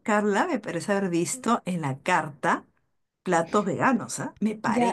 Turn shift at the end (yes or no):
yes